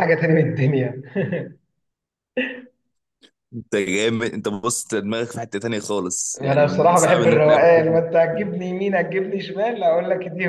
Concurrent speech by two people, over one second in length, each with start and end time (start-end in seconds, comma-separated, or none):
6.4-8.0